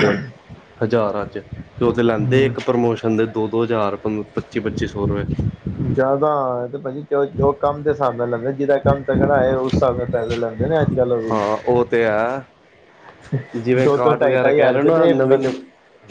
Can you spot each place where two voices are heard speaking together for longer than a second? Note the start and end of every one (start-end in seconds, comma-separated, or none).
13.8-15.1